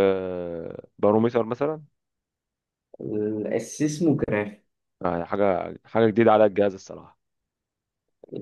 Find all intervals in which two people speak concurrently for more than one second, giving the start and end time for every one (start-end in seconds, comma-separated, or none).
none